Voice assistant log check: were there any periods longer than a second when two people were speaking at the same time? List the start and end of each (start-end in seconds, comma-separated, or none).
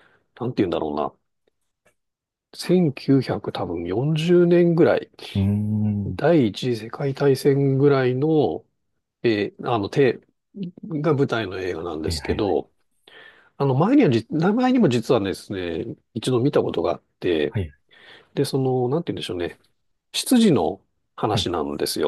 none